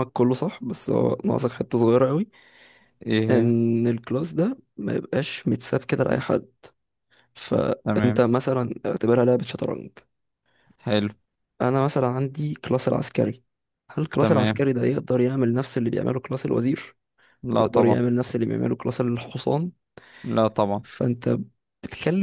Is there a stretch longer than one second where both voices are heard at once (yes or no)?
no